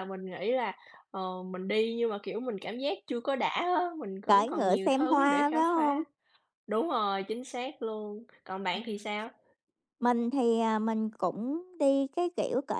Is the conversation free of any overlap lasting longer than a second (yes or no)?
no